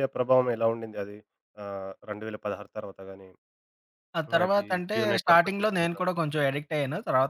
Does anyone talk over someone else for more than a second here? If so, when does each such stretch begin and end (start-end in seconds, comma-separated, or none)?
4.3-6.1